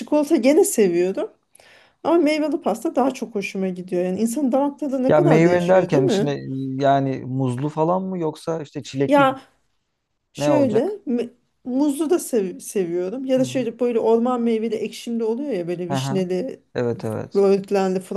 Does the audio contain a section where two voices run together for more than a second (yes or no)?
yes